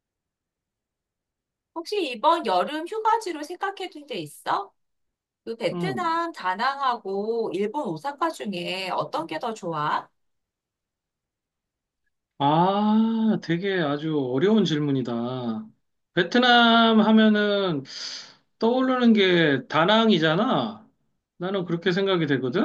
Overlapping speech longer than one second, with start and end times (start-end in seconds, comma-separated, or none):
none